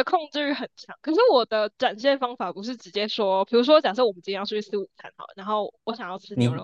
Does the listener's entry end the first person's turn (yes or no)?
yes